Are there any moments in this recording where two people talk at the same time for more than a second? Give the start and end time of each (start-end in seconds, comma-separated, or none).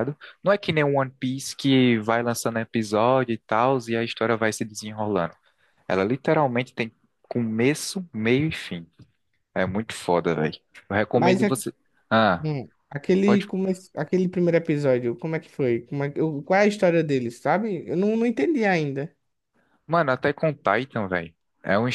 none